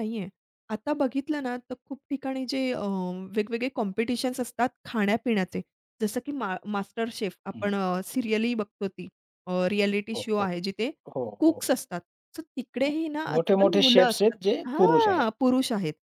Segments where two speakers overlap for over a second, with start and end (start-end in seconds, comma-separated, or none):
13.3-15.3